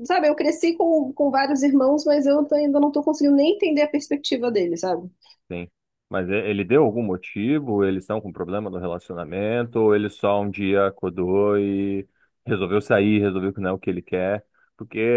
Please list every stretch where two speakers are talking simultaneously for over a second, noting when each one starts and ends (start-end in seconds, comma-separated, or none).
none